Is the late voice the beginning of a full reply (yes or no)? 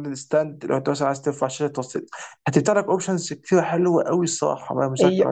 yes